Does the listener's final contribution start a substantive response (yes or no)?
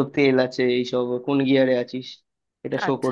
yes